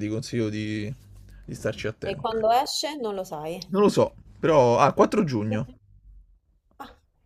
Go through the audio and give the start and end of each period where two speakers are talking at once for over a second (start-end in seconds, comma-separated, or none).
none